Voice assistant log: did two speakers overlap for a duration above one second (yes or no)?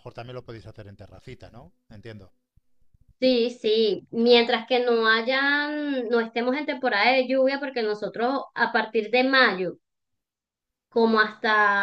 no